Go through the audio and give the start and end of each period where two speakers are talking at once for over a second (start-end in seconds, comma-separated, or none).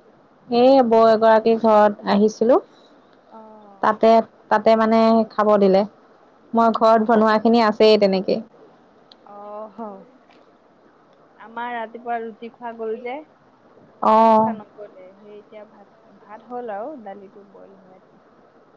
none